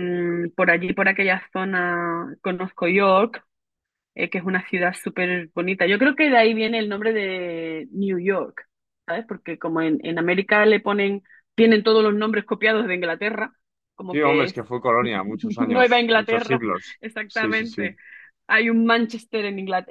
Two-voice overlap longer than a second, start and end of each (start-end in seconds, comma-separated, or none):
15.6-17.9